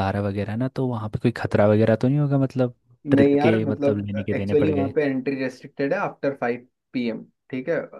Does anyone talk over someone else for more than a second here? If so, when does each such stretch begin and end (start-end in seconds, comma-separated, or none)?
3.1-4.9